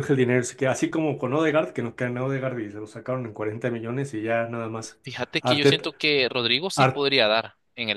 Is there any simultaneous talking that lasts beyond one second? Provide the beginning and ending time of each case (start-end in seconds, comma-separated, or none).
none